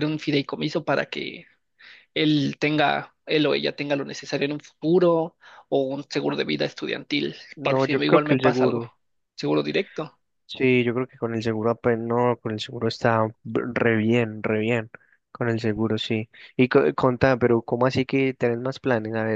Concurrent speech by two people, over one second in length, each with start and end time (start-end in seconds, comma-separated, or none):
7.6-8.8